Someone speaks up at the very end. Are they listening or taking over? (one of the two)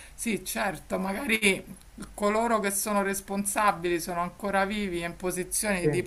listening